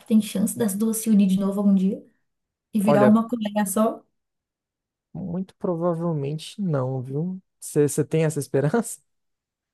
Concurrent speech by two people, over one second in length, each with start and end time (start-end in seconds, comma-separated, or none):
none